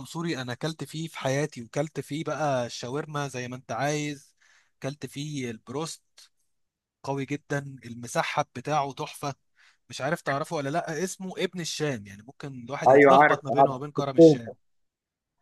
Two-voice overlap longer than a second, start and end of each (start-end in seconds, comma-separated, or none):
12.9-14.5